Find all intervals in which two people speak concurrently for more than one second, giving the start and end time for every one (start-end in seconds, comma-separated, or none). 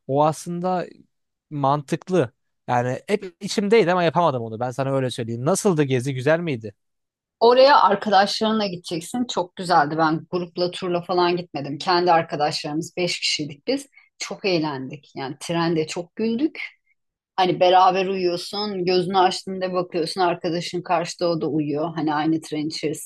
none